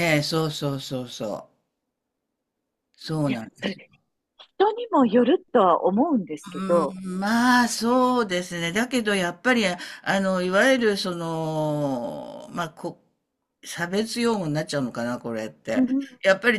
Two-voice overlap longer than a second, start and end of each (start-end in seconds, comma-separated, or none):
none